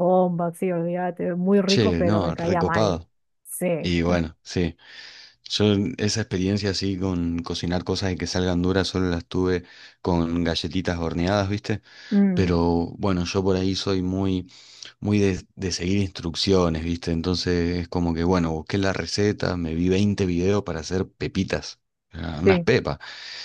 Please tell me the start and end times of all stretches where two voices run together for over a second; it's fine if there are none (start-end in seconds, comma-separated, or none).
1.6-3.0